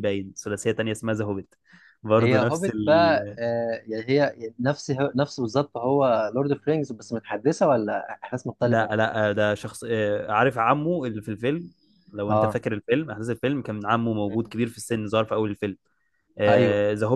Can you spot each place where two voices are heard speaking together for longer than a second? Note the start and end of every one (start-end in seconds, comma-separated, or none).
2.2-3.4